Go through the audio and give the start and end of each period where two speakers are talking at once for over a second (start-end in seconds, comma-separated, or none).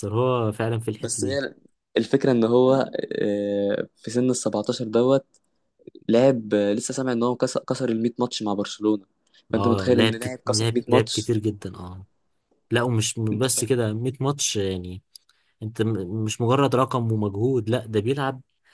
9.6-11.3